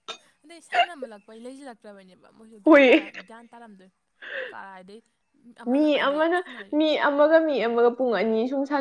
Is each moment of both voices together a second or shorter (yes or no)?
yes